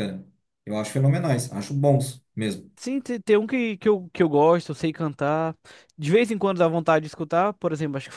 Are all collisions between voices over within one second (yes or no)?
yes